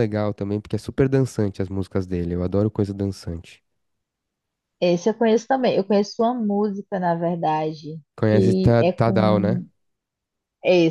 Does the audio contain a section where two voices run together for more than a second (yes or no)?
yes